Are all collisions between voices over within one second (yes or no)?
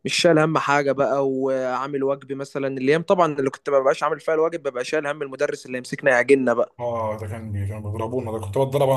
yes